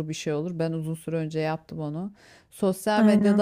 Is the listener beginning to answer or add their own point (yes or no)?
no